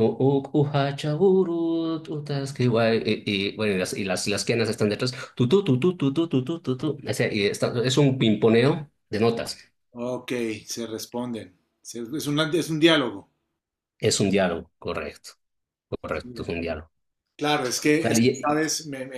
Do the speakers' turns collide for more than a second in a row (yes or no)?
no